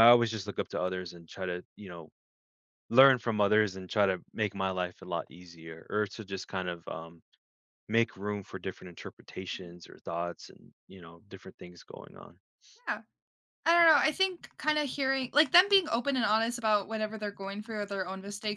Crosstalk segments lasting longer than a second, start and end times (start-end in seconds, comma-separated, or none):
none